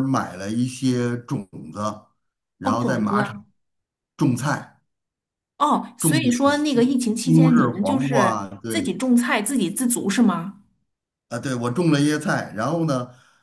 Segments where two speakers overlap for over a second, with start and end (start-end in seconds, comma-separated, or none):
6.0-9.0